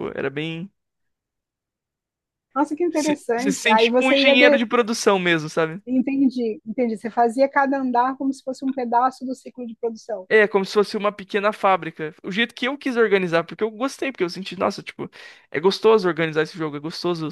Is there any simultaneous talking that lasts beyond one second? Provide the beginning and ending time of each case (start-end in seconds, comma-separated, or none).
2.9-4.6